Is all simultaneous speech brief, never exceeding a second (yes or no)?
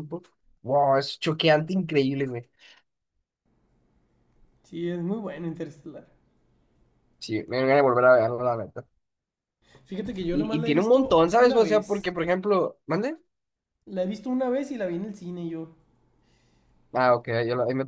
no